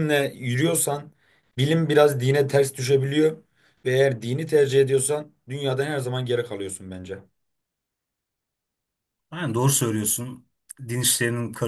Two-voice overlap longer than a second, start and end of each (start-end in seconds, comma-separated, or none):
none